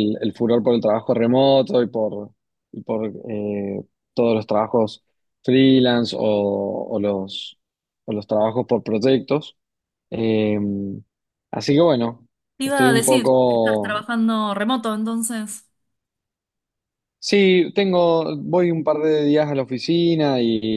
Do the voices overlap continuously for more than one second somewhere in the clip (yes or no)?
yes